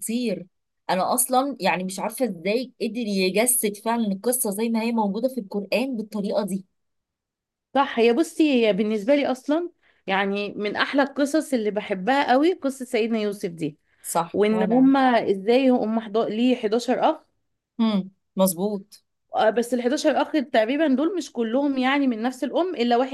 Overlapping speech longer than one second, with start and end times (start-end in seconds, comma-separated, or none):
none